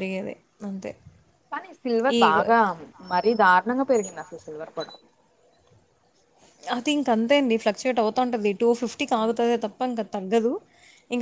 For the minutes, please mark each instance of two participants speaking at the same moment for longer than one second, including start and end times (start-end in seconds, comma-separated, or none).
none